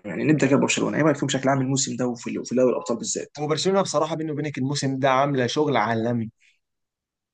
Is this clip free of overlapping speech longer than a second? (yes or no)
yes